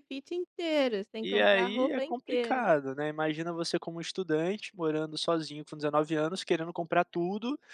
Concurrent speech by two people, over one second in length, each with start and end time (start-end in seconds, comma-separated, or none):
1.2-2.7